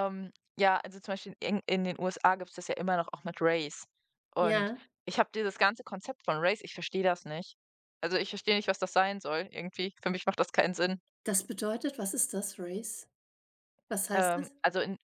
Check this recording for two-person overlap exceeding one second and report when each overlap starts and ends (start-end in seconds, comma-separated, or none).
none